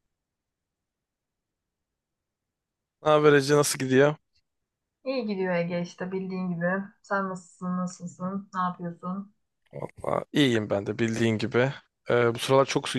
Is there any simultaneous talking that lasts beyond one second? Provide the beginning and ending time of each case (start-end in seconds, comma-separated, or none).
none